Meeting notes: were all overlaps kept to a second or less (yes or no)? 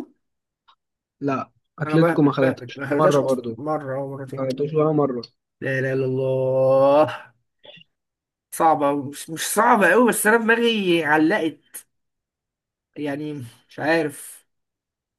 no